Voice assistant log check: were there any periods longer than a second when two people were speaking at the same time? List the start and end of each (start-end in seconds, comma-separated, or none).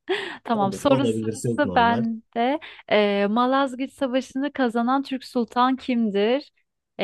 0.5-2.0